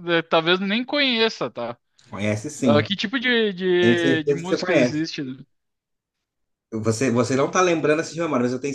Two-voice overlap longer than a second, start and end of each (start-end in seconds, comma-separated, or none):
3.8-5.0